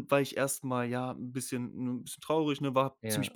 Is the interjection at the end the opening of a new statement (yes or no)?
no